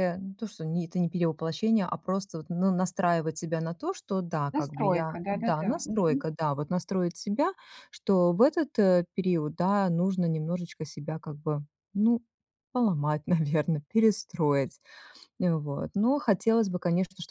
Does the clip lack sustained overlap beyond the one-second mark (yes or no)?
no